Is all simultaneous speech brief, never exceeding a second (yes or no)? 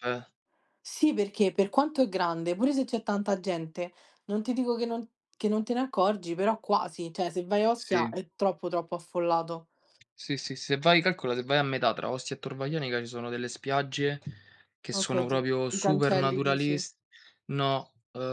no